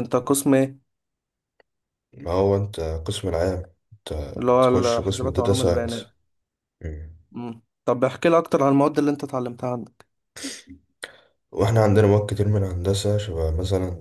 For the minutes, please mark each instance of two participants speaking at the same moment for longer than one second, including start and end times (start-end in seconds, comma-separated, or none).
4.6-6.1